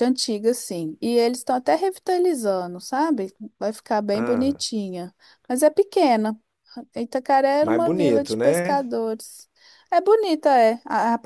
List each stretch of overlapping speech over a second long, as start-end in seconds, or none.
7.6-8.8